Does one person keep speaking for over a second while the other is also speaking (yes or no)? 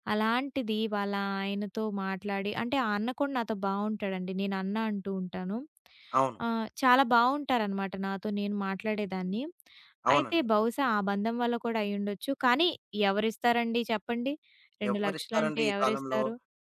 yes